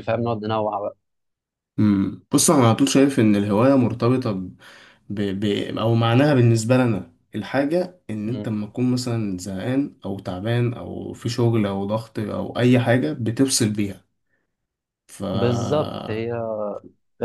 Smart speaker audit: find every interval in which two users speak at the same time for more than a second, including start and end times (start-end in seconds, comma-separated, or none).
none